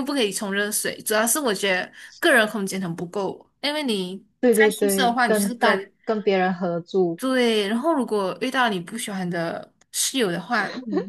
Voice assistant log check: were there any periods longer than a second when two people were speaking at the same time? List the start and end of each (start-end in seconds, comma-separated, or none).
4.4-5.8